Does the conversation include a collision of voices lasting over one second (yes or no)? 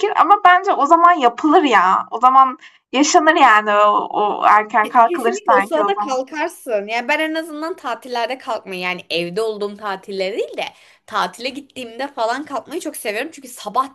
yes